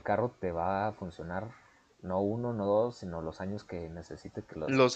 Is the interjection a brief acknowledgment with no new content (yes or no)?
no